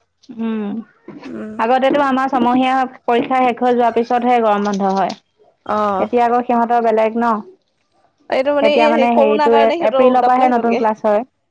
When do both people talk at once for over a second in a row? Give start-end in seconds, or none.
8.7-10.8